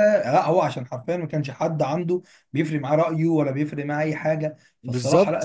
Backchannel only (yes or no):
yes